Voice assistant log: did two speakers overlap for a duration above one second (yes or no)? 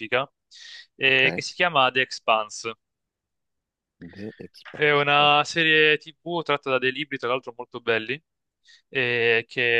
no